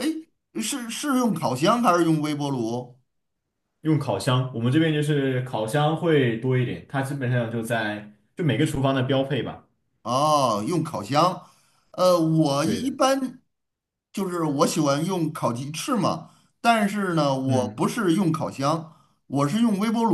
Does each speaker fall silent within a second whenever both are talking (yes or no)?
yes